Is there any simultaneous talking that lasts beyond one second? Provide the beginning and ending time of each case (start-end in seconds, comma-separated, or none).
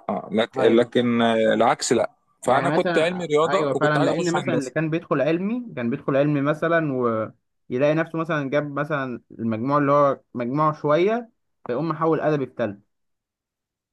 2.5-4.7